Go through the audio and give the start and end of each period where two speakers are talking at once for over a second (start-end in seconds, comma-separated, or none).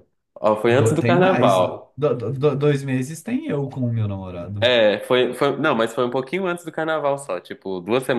0.7-1.9